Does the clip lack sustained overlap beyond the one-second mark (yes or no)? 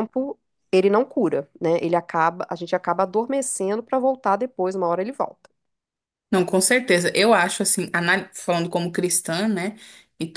yes